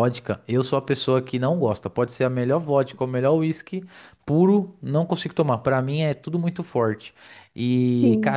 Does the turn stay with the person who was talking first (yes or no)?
yes